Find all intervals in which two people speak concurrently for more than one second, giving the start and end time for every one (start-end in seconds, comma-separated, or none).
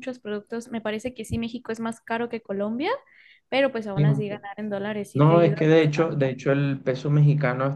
5.1-6.4